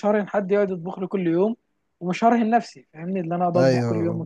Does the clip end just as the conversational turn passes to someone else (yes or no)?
yes